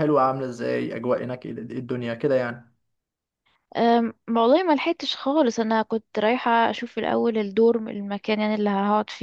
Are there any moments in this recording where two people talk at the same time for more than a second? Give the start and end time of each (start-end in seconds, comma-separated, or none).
none